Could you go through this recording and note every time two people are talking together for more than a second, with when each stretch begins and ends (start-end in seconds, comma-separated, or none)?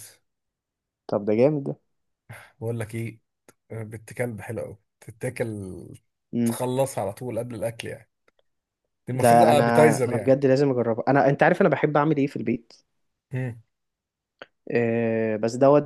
9.1-10.4